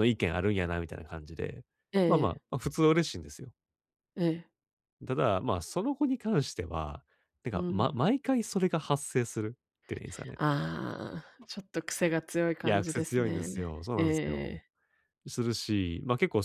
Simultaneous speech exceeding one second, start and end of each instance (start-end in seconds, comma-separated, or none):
12.6-14.6